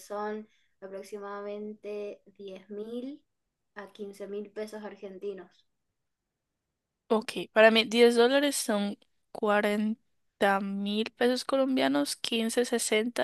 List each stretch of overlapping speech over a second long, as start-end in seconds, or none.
none